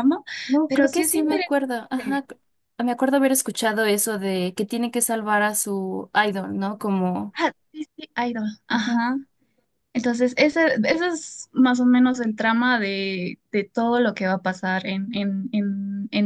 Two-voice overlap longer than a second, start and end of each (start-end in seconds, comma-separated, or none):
0.7-2.2